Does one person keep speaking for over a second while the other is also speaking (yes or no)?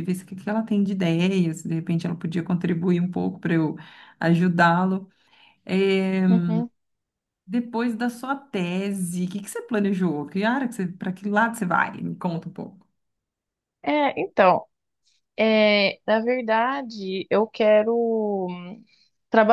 no